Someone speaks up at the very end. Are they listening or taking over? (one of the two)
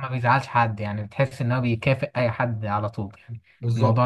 taking over